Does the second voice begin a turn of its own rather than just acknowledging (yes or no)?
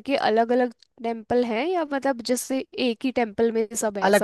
yes